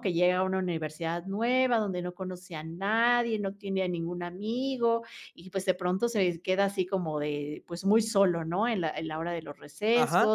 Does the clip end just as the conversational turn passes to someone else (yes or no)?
no